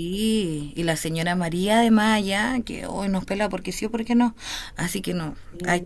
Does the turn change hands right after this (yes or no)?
no